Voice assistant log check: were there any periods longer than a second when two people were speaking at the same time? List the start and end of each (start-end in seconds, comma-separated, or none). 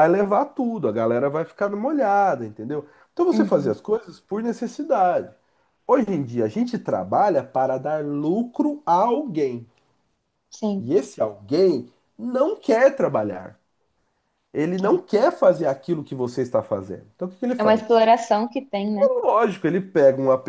none